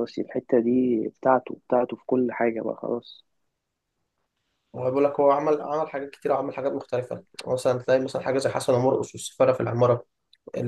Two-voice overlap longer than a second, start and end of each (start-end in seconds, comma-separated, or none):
none